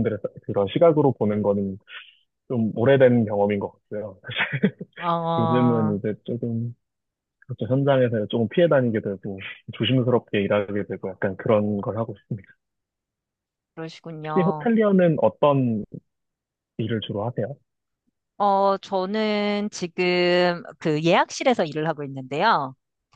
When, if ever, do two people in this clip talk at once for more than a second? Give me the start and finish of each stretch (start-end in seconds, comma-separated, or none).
none